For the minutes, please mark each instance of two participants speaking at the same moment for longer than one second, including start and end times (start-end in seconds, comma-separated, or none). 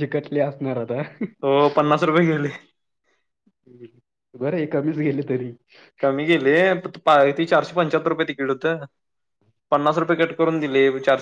none